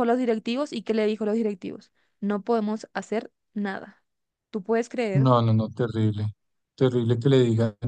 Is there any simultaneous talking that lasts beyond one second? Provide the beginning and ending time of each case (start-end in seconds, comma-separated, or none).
none